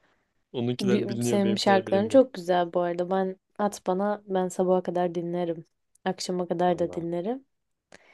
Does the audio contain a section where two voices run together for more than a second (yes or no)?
yes